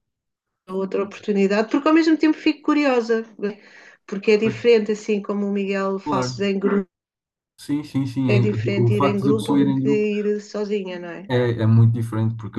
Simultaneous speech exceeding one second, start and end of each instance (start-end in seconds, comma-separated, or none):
8.3-10.1